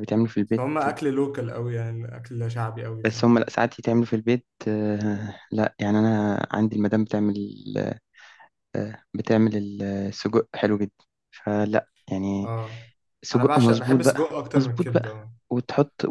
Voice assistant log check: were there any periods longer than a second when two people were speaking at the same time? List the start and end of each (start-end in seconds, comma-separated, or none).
13.3-15.1